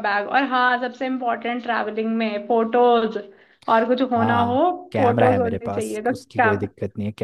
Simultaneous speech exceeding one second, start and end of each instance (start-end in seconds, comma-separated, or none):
4.2-6.5